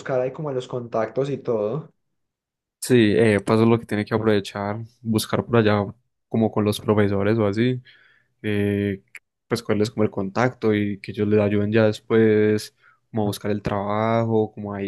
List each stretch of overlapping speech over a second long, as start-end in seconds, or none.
none